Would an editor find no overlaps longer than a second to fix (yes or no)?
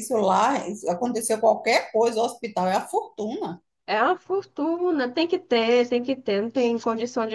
yes